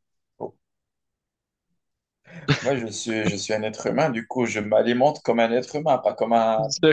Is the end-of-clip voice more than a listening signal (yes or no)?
yes